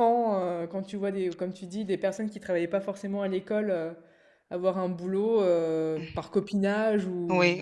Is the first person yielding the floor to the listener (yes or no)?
yes